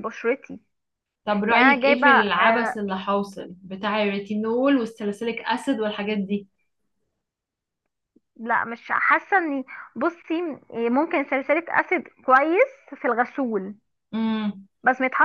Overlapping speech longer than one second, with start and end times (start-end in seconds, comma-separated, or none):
1.5-2.8